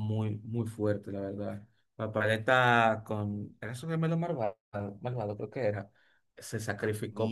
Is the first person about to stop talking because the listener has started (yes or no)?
no